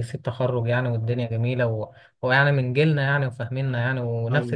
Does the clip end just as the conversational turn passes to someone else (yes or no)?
no